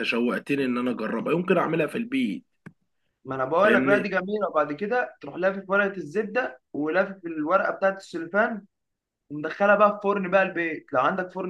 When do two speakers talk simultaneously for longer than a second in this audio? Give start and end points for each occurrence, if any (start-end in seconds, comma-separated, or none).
none